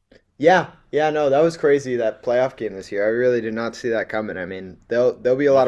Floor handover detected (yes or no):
no